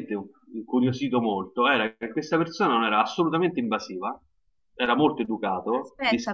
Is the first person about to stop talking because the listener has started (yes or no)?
yes